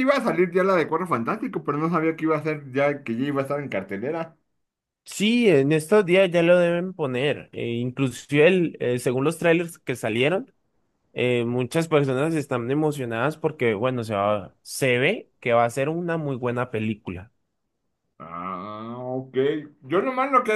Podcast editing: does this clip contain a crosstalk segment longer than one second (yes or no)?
no